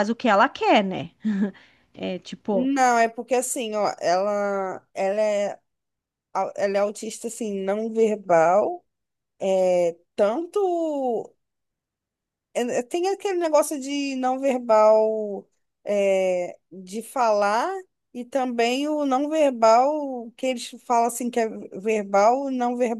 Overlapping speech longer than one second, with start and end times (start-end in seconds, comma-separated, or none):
none